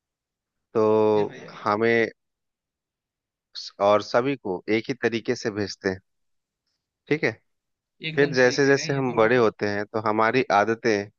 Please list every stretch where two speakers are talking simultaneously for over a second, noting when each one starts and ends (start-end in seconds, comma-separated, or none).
8.1-9.5